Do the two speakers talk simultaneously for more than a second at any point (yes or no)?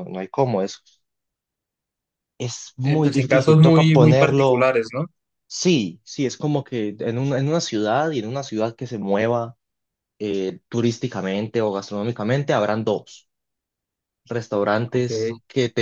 yes